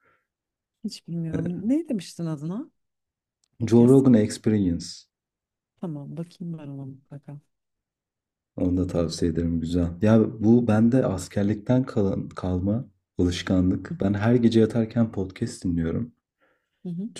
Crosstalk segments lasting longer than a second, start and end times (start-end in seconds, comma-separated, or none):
none